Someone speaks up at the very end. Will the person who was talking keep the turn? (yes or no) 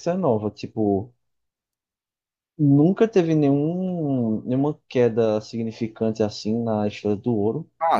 no